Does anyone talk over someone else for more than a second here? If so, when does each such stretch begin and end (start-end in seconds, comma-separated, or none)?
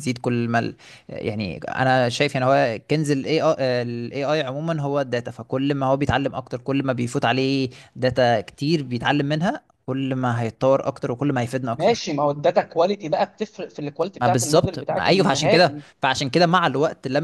14.2-15.8